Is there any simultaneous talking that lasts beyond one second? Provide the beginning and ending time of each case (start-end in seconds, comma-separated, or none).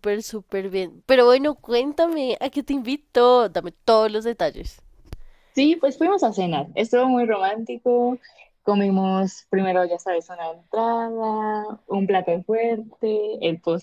none